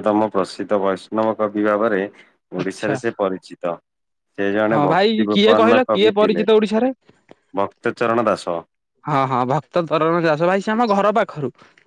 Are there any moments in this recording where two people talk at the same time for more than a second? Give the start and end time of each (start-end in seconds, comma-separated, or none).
4.7-6.5